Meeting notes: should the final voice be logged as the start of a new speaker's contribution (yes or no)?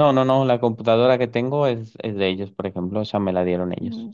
no